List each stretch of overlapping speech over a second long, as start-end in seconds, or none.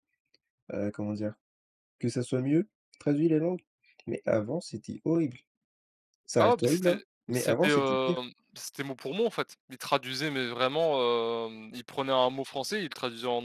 6.4-8.2